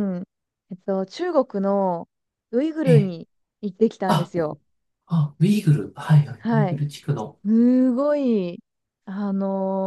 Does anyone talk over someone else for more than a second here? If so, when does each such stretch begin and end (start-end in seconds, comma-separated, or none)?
none